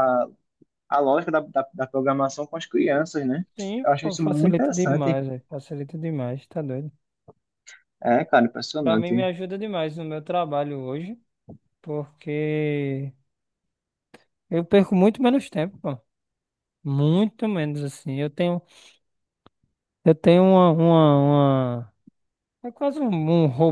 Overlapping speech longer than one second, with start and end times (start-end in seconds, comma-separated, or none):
3.8-5.2